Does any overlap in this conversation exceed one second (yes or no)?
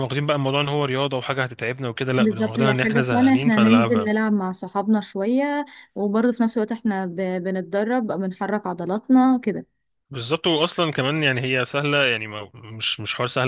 yes